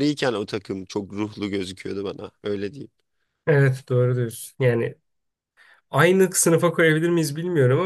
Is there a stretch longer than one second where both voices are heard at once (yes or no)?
no